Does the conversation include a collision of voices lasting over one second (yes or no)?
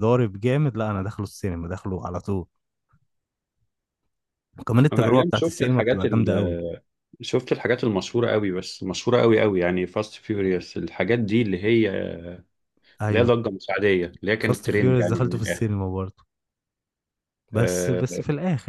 yes